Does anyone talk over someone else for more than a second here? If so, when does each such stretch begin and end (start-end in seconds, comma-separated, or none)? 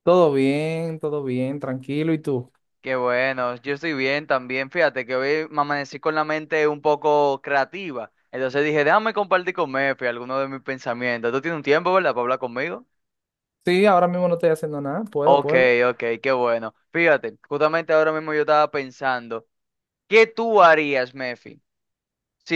none